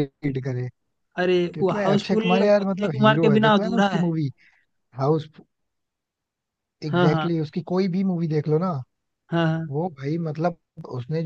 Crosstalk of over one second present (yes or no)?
yes